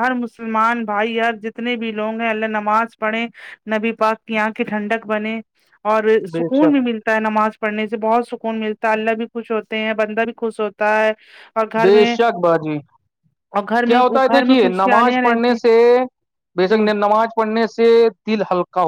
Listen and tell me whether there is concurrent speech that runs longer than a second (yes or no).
yes